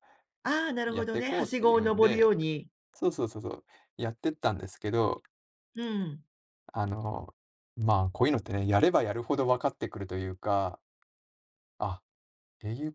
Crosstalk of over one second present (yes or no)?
yes